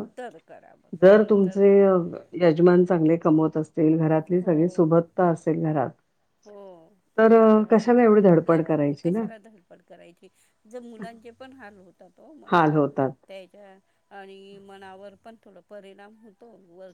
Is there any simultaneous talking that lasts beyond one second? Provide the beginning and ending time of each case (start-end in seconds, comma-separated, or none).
7.7-9.2